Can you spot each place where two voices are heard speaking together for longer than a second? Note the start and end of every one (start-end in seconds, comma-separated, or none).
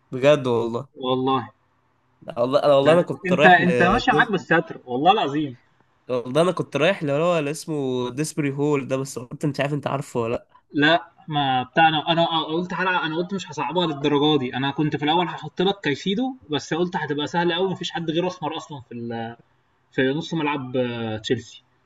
2.8-4.4